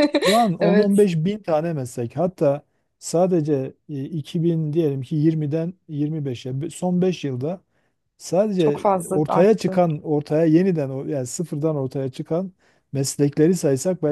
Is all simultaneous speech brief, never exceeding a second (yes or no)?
no